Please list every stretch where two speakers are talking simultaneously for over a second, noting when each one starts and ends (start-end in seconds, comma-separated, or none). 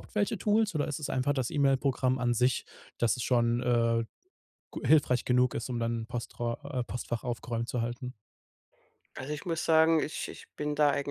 none